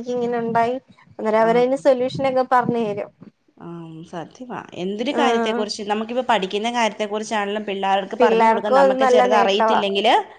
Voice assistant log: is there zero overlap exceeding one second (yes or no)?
no